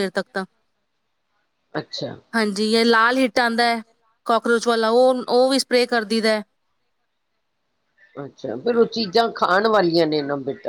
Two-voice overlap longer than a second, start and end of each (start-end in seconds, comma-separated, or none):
none